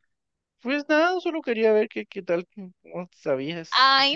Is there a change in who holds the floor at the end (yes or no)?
yes